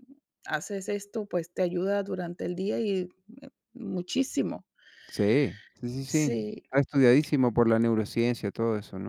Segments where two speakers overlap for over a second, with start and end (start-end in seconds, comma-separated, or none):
none